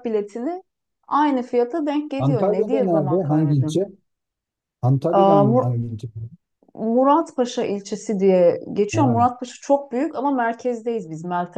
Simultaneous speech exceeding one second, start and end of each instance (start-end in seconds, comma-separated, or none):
2.2-3.8